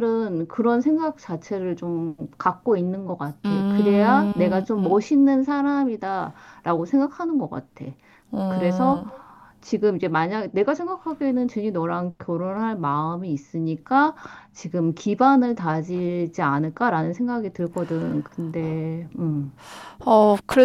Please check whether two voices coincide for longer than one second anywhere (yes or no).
yes